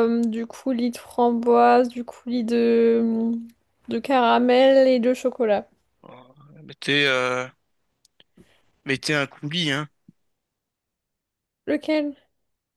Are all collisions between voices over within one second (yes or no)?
yes